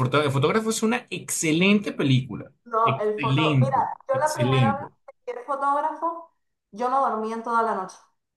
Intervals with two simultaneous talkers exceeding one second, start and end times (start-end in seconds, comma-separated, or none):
2.6-4.9